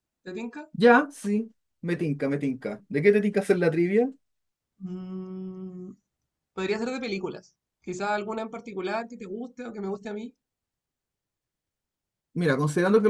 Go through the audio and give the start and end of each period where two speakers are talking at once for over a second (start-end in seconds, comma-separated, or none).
none